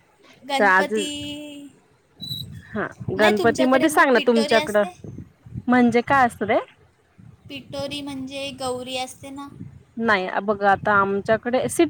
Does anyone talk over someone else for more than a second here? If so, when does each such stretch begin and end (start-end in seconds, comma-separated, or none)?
3.2-4.8